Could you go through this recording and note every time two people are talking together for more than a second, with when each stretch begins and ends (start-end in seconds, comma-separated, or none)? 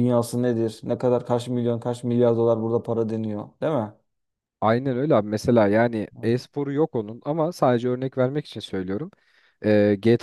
none